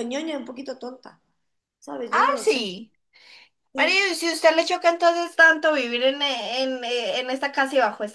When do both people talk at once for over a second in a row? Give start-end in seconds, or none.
none